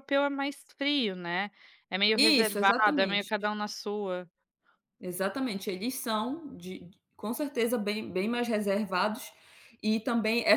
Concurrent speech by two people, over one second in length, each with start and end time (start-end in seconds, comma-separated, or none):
2.1-3.3